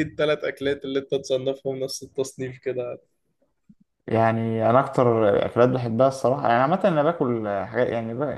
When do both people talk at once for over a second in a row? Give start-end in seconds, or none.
none